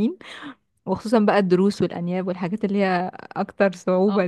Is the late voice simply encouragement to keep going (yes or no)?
yes